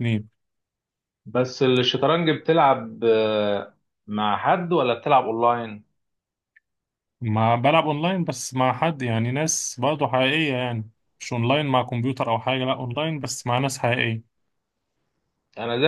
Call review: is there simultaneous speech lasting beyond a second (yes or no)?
no